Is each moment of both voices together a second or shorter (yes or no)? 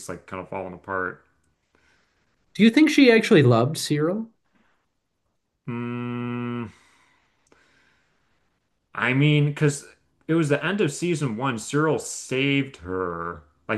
yes